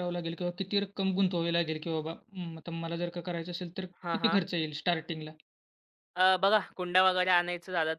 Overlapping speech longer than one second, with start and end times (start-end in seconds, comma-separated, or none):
none